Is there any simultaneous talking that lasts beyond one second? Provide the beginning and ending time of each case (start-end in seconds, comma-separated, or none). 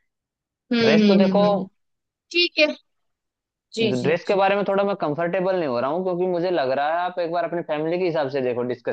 none